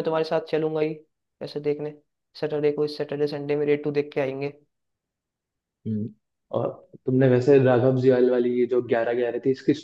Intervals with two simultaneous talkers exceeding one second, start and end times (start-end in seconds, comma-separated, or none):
none